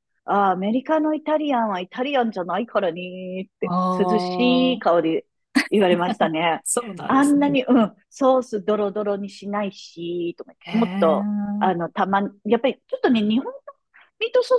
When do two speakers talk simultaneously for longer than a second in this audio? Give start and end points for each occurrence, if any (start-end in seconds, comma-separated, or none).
3.6-5.0